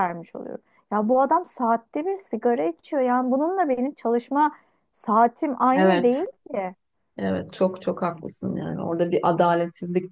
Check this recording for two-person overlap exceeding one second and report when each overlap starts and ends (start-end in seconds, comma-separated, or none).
none